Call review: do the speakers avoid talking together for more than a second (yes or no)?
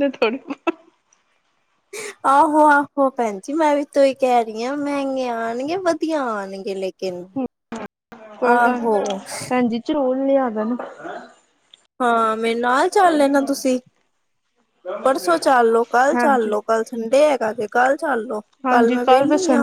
yes